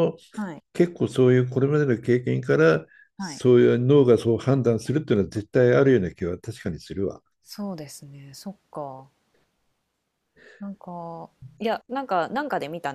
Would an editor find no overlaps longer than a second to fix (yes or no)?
yes